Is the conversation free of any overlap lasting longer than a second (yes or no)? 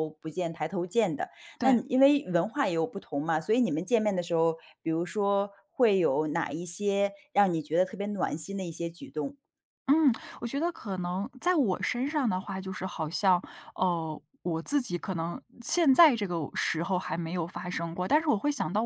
yes